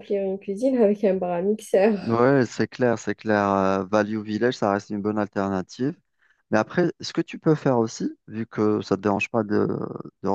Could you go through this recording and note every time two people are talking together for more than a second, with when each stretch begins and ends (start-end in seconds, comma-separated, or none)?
none